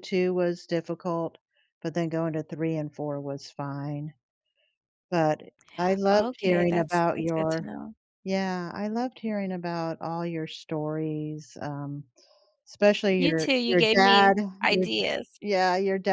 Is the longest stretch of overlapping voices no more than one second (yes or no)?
no